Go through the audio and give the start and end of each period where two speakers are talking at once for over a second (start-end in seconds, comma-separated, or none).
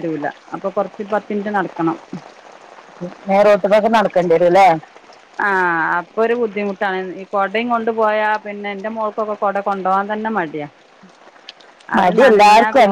none